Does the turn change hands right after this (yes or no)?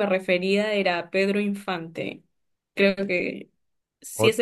yes